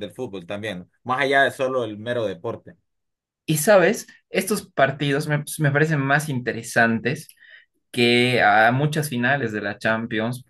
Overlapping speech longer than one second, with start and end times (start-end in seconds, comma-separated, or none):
none